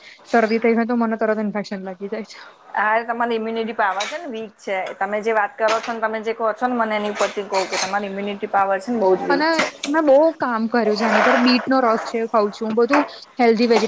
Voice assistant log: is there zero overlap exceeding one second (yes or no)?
yes